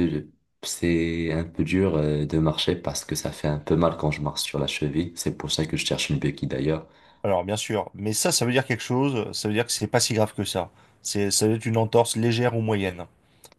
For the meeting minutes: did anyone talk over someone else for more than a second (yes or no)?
no